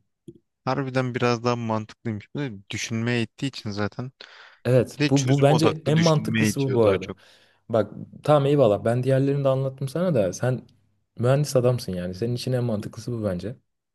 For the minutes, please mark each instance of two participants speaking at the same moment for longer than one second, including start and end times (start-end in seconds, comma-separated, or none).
4.9-7.1